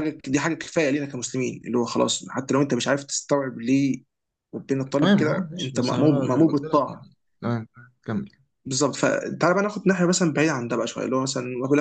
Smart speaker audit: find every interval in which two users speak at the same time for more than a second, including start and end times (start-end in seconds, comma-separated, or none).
5.0-7.1